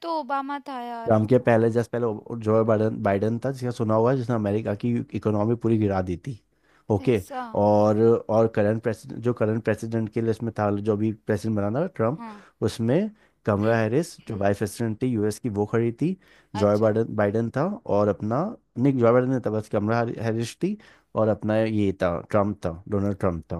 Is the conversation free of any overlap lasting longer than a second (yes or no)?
yes